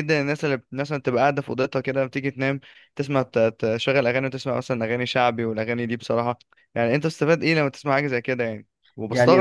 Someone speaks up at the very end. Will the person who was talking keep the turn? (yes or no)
no